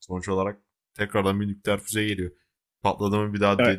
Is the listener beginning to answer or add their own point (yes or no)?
no